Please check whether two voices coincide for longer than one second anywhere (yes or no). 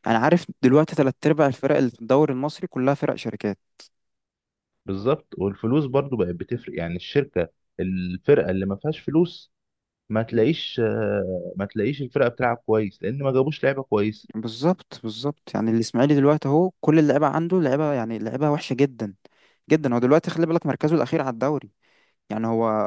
no